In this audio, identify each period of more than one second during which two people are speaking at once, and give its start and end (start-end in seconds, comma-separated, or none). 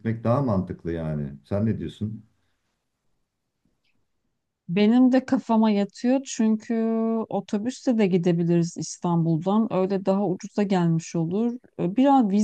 none